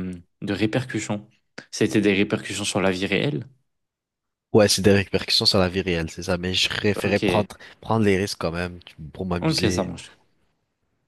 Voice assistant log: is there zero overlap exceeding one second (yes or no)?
yes